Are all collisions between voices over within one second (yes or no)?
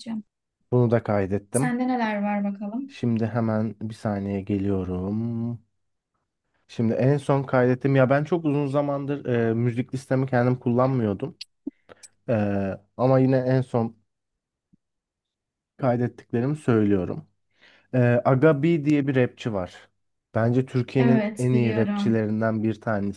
no